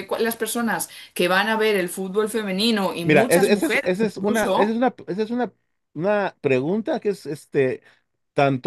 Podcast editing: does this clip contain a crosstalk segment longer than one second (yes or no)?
yes